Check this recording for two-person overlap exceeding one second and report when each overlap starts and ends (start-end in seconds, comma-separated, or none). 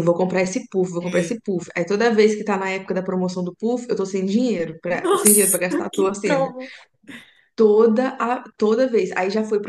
4.9-6.4